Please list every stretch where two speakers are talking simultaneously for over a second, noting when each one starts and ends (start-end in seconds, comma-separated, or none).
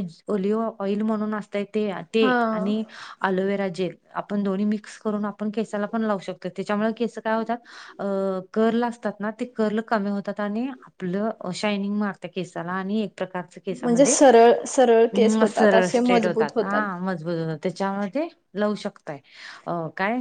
15.1-16.5